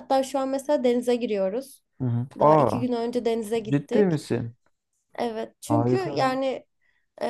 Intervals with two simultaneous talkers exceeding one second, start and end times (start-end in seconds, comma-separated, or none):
none